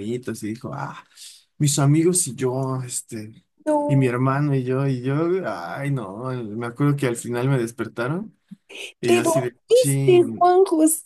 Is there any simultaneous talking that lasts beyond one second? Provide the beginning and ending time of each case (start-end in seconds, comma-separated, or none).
9.1-10.5